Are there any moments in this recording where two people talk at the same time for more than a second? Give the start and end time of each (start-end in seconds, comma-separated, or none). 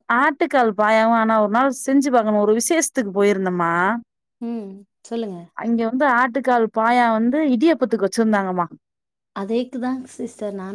none